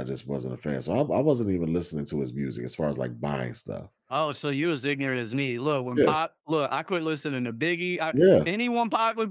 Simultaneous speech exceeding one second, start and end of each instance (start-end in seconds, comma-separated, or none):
none